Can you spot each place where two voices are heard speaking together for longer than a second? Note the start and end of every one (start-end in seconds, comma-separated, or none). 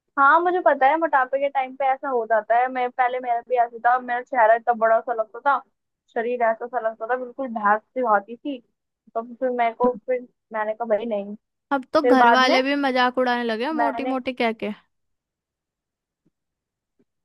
none